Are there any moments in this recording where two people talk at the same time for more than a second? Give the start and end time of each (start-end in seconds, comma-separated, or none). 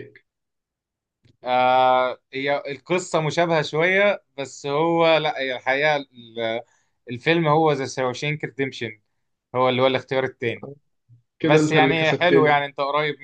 11.4-12.7